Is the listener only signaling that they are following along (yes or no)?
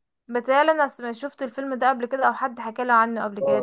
no